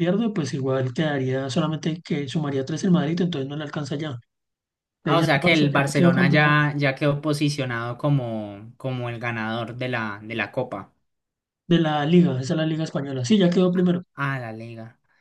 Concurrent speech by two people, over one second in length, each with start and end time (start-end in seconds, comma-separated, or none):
5.1-6.6